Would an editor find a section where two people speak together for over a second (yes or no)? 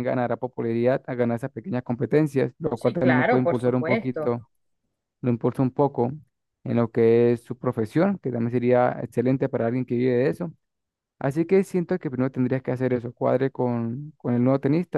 yes